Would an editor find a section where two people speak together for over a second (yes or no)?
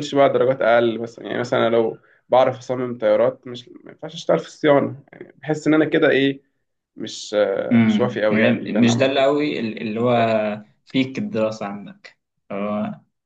yes